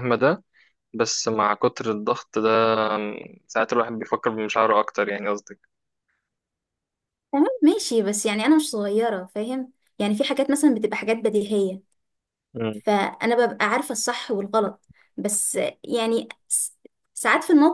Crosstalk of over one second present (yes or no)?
no